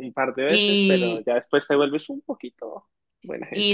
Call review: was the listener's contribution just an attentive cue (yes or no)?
no